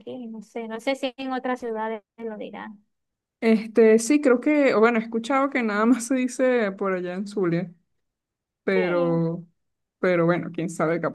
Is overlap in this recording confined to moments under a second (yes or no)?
yes